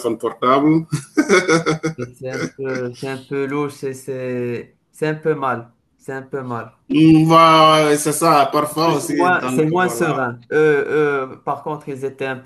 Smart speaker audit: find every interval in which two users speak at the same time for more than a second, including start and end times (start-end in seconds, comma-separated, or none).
8.8-10.3